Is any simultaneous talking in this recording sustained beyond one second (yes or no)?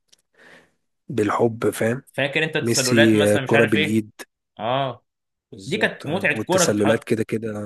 yes